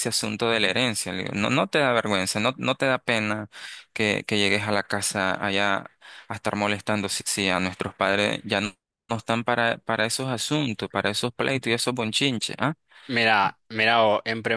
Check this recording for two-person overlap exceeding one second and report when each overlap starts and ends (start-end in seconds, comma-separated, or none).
none